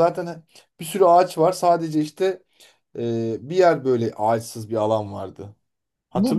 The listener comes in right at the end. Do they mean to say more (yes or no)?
yes